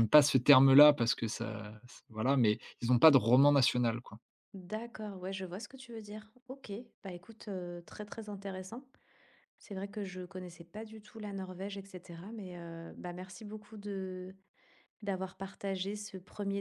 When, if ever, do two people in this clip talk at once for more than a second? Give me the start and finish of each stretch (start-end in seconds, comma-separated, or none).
none